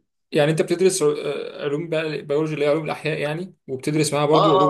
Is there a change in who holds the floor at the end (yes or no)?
no